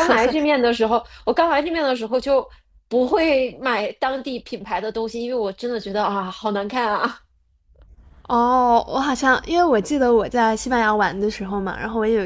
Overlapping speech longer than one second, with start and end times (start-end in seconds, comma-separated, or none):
none